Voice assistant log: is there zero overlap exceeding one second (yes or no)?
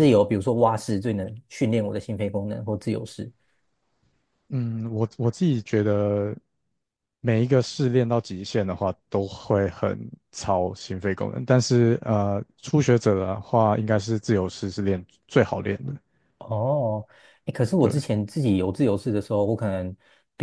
yes